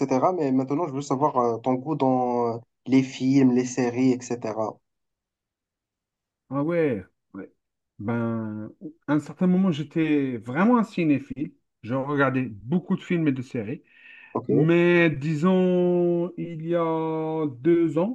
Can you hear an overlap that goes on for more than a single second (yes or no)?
no